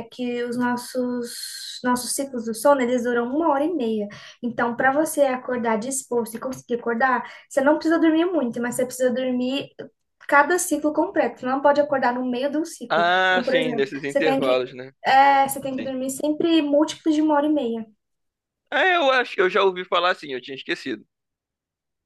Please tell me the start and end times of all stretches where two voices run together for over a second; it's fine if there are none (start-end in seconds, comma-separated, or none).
12.9-14.6